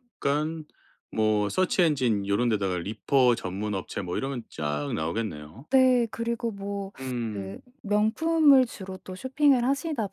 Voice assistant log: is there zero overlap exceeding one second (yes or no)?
yes